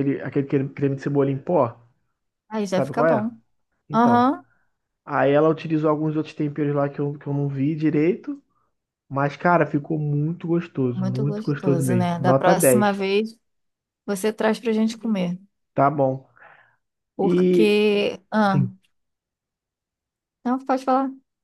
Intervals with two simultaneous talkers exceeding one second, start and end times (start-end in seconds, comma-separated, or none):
10.9-13.0